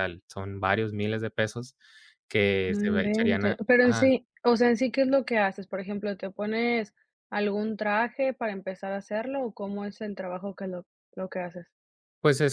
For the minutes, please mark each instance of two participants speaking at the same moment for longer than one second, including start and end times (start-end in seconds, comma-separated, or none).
2.7-4.1